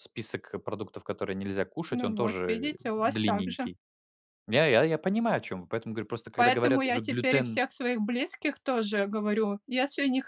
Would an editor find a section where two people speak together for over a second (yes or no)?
yes